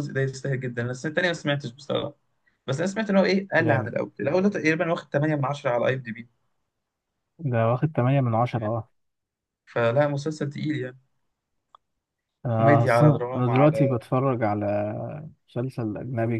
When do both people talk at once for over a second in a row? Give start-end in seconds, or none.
12.5-14.0